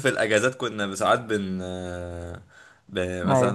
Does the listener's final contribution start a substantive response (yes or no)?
no